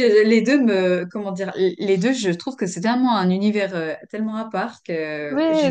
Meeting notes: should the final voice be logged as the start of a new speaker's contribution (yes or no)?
yes